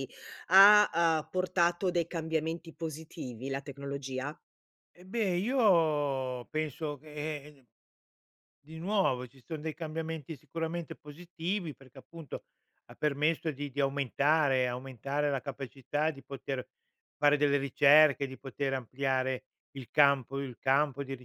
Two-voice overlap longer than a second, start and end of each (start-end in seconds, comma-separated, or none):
none